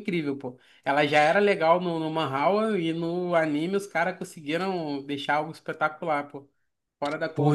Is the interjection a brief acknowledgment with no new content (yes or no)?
no